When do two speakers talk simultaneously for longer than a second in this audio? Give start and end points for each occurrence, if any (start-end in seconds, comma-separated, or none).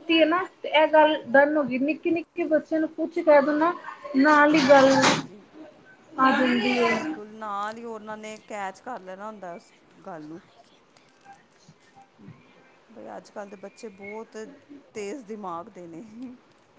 none